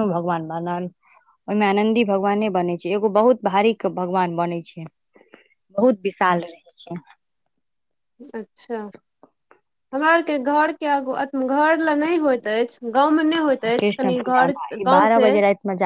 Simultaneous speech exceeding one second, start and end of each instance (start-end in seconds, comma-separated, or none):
13.8-15.3